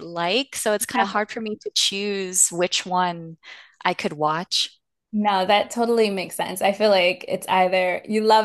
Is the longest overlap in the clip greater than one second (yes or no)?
no